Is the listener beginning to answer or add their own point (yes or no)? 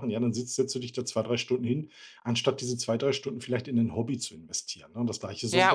yes